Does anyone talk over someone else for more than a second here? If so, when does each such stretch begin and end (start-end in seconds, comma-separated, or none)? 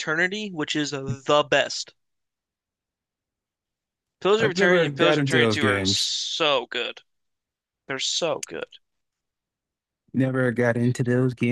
4.4-6.1